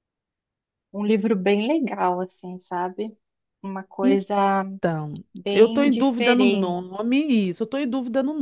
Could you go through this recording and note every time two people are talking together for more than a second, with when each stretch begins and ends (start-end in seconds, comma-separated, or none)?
5.3-6.8